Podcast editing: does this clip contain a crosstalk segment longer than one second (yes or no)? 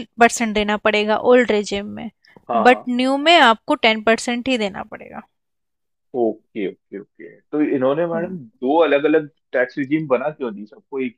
no